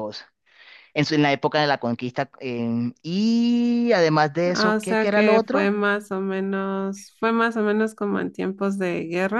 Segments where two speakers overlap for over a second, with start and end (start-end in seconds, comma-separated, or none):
4.5-5.7